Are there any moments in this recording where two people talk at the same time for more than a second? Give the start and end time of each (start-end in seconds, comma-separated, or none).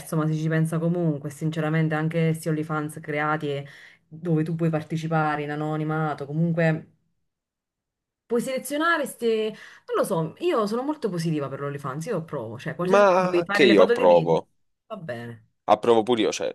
12.8-14.4